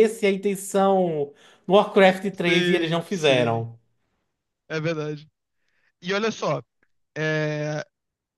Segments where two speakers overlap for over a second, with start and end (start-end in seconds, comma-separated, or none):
2.5-3.7